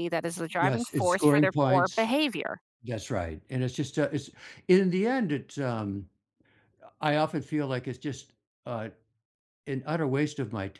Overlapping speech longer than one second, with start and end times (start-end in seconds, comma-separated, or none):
0.6-2.1